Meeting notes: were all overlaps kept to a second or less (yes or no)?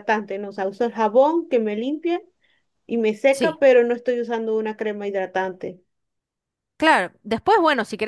yes